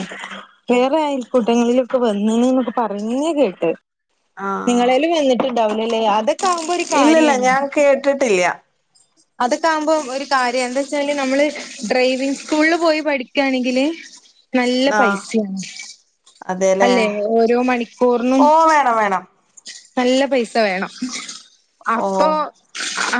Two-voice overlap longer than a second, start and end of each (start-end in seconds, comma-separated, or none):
none